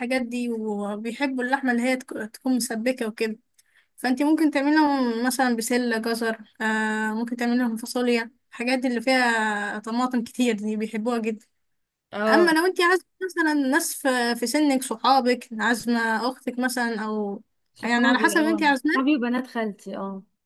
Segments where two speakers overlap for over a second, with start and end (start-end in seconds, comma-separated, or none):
17.8-19.1